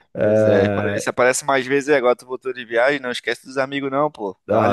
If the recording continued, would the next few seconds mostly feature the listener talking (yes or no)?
yes